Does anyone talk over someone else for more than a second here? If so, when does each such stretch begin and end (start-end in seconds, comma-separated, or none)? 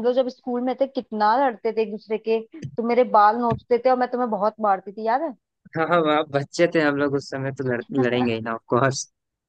none